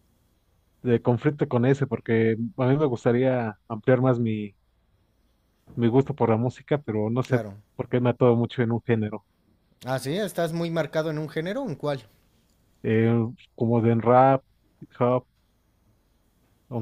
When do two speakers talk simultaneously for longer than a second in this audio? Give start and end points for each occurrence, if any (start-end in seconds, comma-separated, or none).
none